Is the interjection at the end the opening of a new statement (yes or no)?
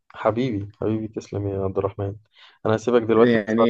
yes